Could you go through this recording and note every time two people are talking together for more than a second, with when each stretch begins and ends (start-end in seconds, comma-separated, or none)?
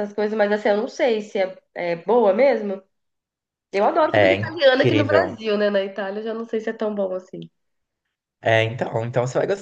4.1-5.4